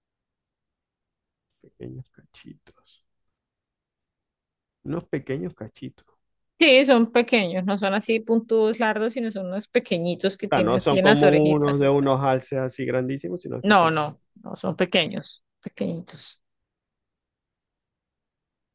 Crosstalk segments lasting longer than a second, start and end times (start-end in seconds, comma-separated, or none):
10.4-11.9